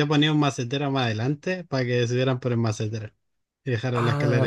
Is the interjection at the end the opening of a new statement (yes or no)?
yes